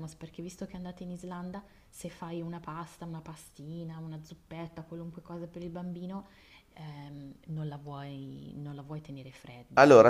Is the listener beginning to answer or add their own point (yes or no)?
yes